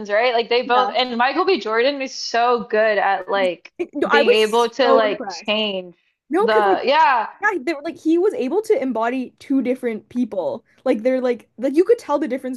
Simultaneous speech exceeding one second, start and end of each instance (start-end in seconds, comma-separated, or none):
4.1-5.5